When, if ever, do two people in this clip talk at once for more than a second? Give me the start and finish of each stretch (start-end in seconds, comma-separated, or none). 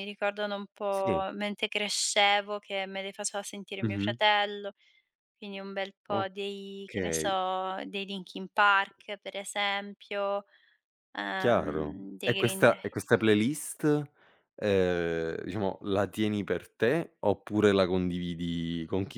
11.4-12.8